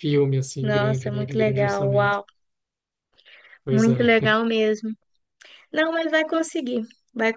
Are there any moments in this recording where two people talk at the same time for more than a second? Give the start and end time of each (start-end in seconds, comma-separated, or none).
0.6-2.2